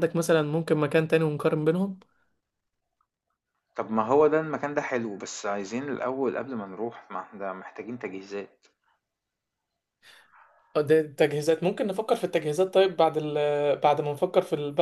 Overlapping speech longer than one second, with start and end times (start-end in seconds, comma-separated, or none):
none